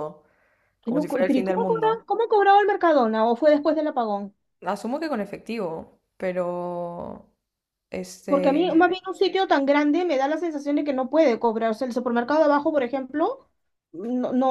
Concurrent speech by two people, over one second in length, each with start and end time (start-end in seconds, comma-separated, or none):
0.8-2.0